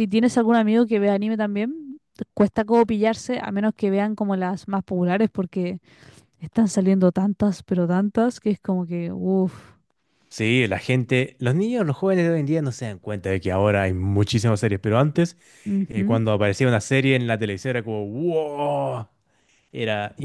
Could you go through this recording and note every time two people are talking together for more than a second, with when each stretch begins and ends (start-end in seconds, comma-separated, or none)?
none